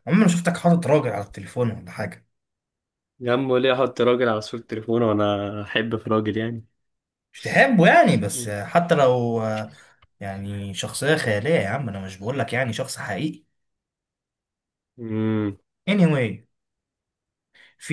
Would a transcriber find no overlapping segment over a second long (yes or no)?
yes